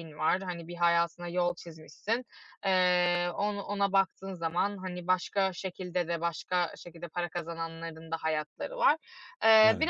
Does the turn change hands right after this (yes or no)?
no